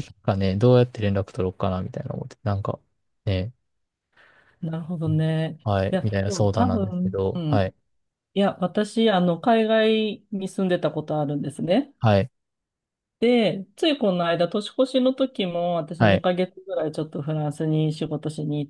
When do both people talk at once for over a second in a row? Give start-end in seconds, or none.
5.6-7.7